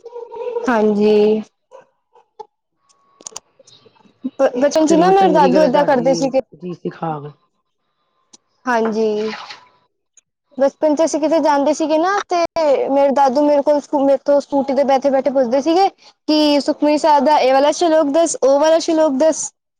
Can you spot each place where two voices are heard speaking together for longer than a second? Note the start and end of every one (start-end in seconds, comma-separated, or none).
4.9-6.4